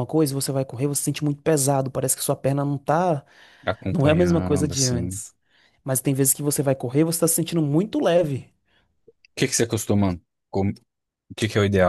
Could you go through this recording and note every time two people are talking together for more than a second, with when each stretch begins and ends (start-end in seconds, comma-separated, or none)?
3.9-5.2